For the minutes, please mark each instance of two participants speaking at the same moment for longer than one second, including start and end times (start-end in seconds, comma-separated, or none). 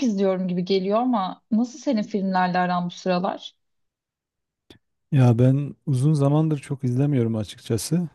none